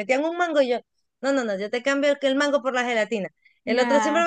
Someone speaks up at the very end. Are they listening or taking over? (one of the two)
listening